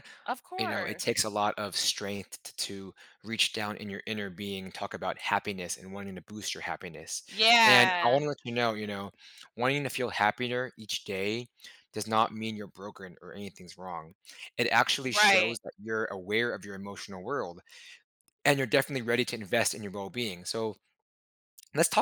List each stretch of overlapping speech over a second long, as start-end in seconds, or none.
none